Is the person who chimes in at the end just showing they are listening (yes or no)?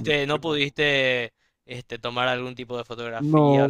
no